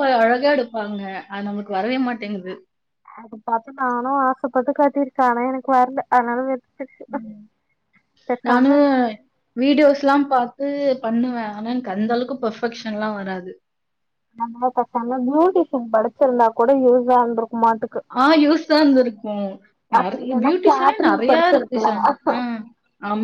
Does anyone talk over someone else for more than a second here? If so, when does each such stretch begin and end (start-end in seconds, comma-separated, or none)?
20.0-21.9